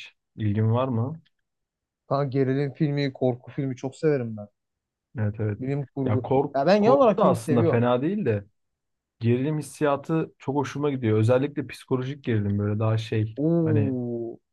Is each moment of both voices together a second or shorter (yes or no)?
no